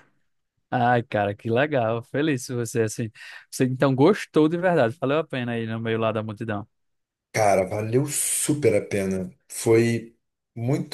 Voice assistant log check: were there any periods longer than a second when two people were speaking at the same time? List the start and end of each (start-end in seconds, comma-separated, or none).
none